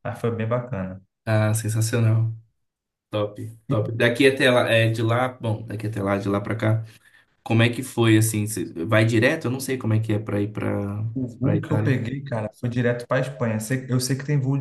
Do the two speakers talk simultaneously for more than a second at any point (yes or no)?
no